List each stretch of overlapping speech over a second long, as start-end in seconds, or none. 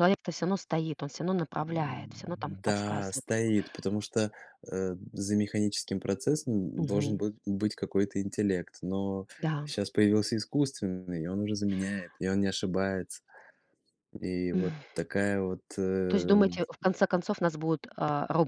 1.6-3.2